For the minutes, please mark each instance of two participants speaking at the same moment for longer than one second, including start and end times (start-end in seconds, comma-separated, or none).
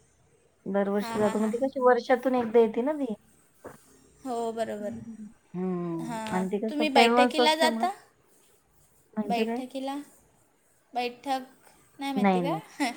6.1-7.8